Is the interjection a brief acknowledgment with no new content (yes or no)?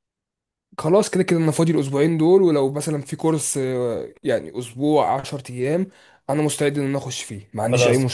no